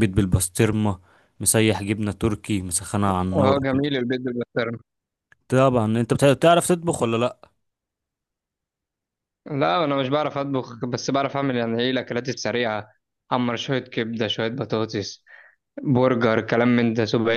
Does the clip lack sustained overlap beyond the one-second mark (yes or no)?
yes